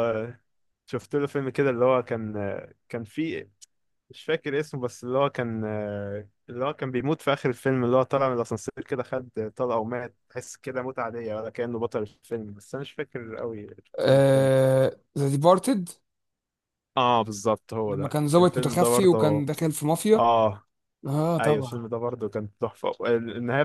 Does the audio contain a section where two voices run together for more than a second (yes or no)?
yes